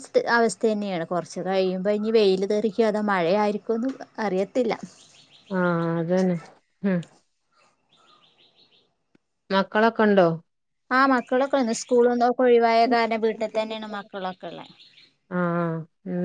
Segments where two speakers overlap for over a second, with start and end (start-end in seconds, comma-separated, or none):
none